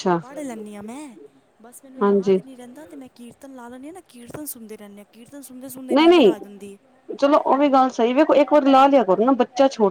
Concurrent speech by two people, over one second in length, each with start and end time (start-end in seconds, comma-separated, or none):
none